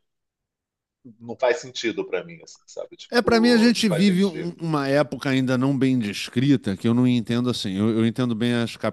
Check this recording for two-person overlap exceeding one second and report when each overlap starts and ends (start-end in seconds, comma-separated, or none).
3.1-4.5